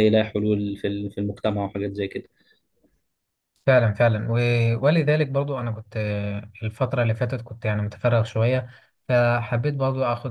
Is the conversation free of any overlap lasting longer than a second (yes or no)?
yes